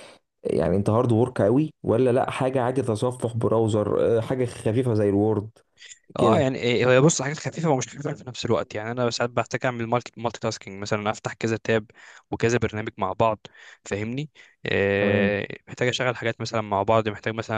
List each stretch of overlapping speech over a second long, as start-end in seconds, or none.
none